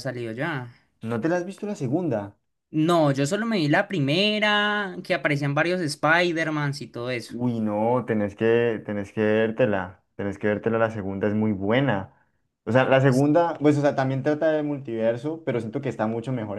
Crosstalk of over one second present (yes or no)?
no